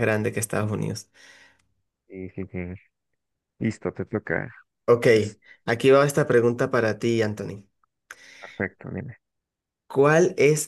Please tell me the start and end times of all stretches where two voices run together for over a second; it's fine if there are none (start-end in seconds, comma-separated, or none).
none